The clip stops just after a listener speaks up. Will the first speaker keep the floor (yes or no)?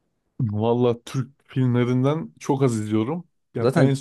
yes